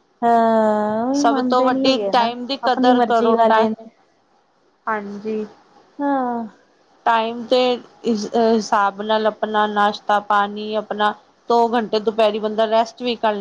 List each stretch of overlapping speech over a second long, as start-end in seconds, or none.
1.2-3.7